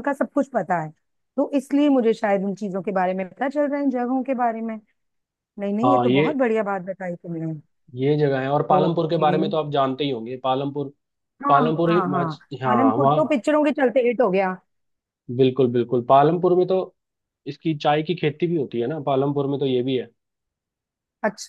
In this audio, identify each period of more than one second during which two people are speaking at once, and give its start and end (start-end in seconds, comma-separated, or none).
11.5-13.4